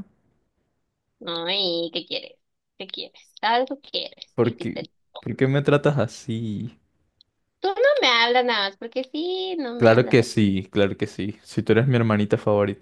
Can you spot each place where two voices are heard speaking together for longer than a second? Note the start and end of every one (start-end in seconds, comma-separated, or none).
none